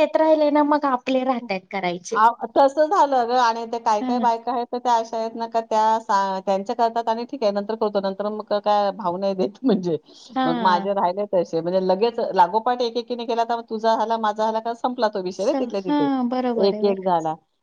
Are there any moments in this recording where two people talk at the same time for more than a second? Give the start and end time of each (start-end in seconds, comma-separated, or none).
15.4-17.0